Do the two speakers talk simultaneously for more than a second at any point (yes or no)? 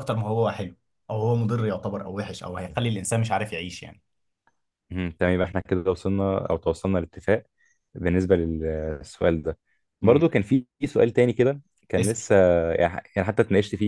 no